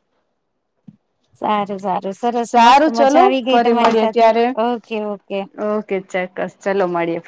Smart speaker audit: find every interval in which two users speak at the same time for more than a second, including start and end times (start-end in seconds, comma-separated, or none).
2.4-4.3